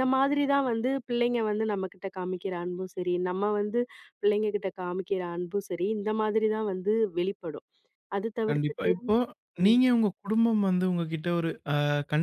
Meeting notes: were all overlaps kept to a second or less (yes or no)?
yes